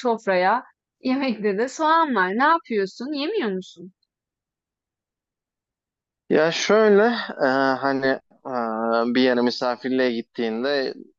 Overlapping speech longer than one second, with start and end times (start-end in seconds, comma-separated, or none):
none